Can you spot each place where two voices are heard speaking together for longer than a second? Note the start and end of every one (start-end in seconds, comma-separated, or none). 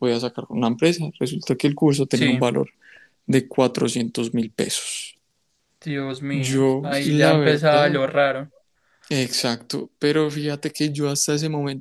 6.3-8.0